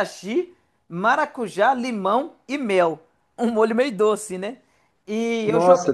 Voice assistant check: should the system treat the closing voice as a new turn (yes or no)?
no